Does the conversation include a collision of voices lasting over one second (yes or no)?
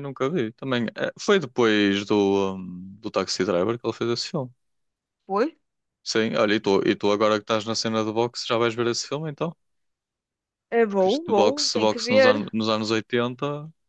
yes